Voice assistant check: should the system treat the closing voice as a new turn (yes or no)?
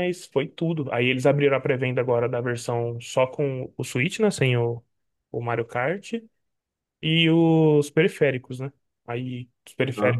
no